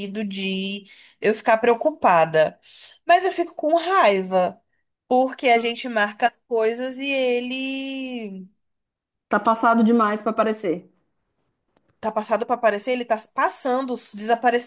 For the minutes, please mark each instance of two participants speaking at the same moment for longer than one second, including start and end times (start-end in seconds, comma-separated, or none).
none